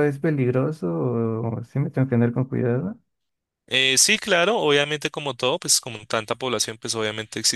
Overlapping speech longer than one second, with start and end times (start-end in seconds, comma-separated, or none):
none